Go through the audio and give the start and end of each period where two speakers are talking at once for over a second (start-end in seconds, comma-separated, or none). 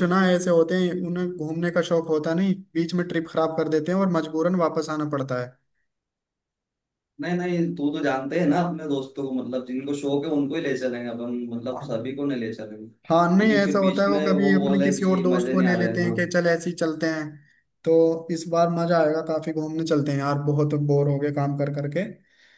13.1-16.1